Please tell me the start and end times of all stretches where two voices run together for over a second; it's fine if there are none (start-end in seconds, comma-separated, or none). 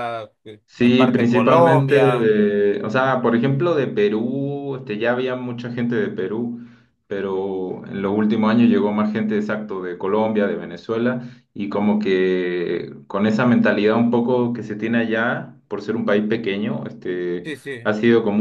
0.7-2.4